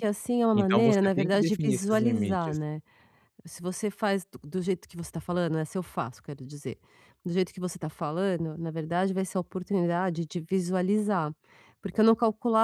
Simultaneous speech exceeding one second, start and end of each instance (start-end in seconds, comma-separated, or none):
0.5-2.6